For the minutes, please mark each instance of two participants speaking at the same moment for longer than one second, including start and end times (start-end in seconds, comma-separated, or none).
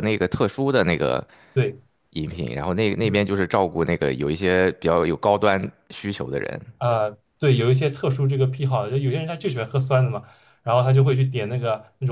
none